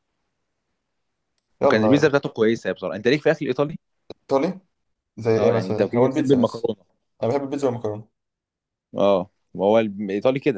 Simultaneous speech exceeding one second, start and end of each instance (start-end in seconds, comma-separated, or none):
5.4-6.7